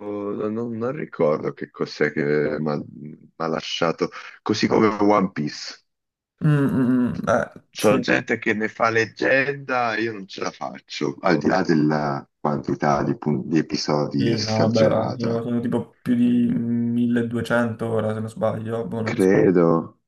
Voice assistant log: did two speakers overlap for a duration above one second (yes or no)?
yes